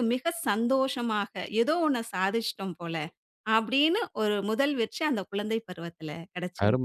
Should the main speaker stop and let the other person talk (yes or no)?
yes